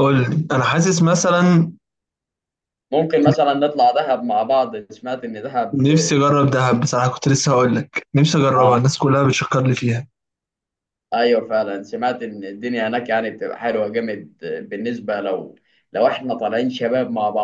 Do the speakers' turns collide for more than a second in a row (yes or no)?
no